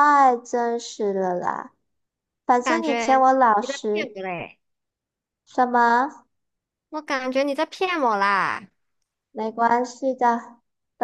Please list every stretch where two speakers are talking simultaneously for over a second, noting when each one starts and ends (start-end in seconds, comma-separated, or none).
2.6-4.2